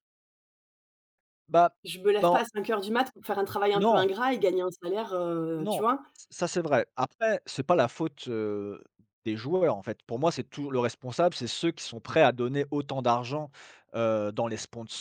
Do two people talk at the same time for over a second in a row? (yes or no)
no